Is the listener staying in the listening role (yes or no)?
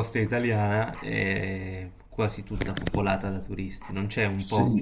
yes